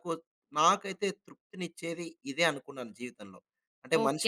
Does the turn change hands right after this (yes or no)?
yes